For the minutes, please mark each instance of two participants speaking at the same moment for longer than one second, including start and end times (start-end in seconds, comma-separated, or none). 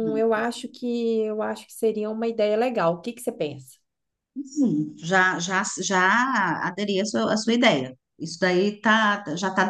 none